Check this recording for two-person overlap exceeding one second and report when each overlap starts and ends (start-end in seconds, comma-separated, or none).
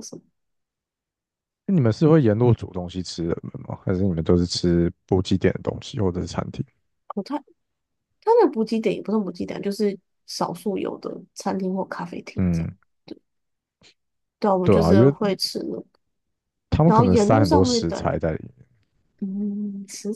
16.9-18.1